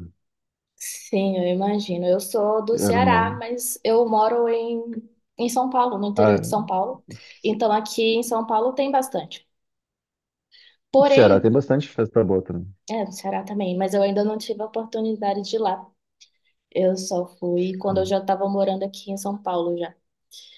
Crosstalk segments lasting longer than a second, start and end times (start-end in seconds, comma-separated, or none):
none